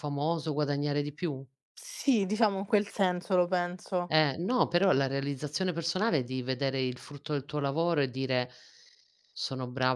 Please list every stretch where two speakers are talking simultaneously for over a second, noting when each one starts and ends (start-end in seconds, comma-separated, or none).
none